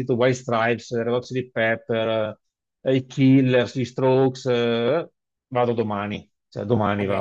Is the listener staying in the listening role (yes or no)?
no